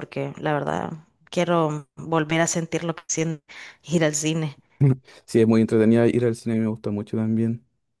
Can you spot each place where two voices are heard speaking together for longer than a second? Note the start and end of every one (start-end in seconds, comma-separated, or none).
none